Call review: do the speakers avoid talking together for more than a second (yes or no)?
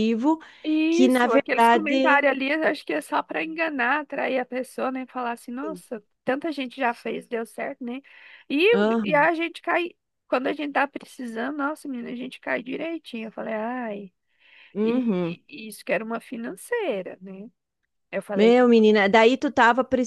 no